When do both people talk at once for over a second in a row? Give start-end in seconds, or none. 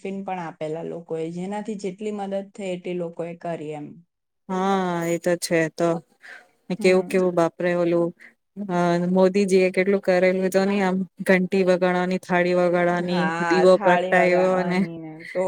13.1-14.8